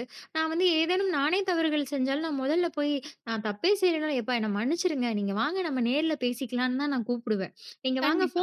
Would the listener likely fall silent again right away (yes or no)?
yes